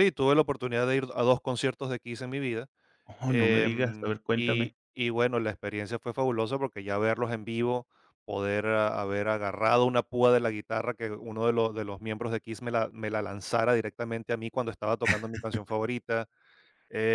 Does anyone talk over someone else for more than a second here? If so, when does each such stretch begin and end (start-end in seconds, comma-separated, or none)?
3.3-4.7